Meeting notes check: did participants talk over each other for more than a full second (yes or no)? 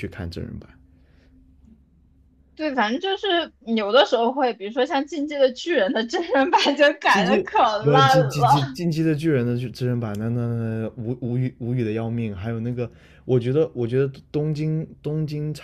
yes